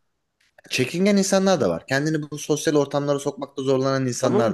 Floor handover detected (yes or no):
yes